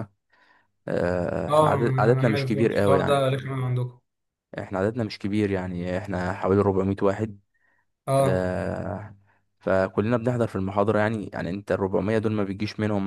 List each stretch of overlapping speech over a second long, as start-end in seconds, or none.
1.5-3.3